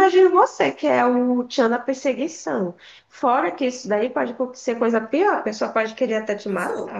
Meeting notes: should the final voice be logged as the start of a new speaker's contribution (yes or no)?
yes